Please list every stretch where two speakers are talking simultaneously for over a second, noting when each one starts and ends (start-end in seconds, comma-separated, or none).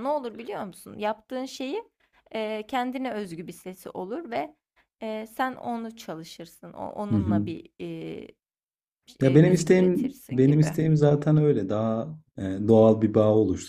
9.2-10.8